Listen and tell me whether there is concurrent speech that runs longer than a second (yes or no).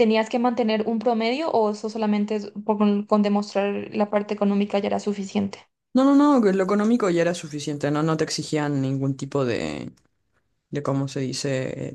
no